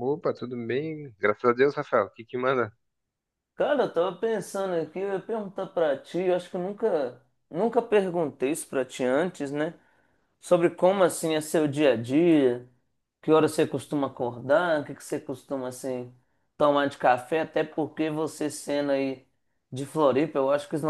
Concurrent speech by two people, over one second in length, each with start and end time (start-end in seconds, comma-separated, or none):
none